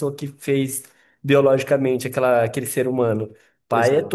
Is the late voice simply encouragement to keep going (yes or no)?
yes